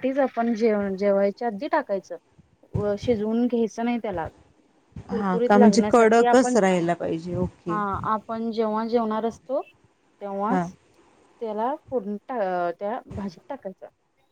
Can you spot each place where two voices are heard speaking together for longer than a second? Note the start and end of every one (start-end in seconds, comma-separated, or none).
5.2-6.6